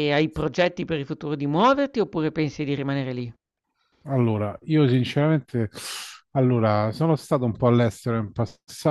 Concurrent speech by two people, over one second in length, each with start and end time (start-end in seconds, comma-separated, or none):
none